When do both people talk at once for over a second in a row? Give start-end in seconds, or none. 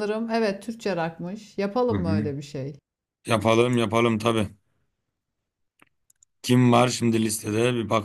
none